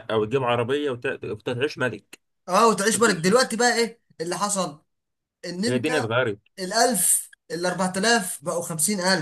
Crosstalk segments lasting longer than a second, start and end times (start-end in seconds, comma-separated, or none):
none